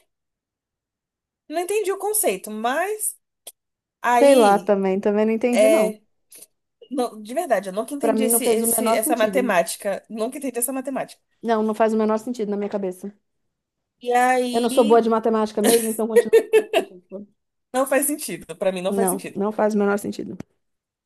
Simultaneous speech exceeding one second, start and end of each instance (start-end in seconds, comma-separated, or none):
8.0-9.6